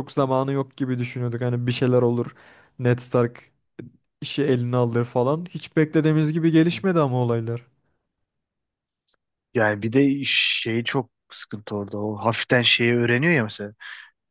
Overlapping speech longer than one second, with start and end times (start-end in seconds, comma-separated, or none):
none